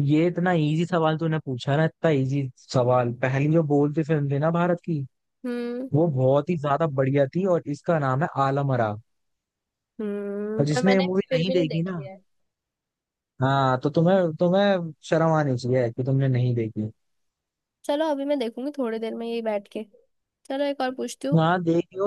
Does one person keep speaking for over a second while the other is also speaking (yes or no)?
yes